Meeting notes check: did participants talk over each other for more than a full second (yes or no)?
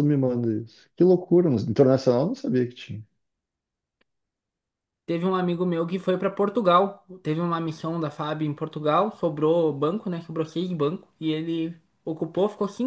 no